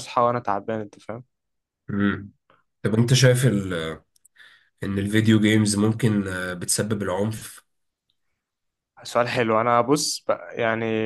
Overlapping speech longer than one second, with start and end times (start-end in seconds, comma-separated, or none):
none